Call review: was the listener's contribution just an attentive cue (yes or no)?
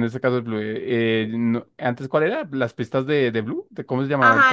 no